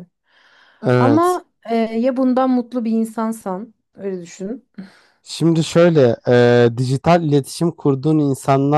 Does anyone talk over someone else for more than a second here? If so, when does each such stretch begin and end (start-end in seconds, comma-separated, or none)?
none